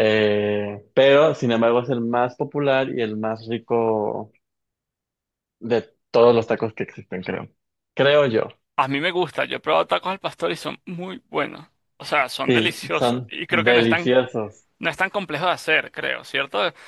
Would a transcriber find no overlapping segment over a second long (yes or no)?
no